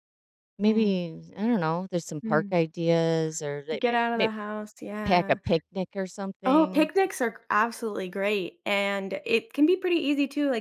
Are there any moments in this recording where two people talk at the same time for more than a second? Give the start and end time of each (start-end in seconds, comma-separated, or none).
none